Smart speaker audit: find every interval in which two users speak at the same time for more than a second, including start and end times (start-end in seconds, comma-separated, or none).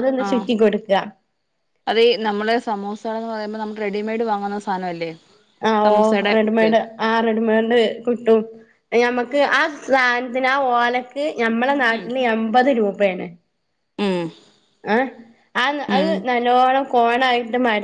none